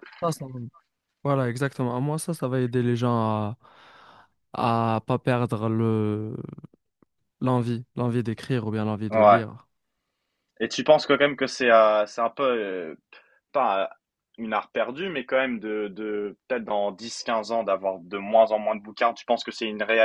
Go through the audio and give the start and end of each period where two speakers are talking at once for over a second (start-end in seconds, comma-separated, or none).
none